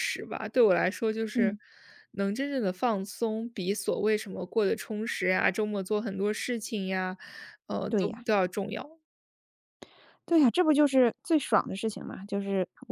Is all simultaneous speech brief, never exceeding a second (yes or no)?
yes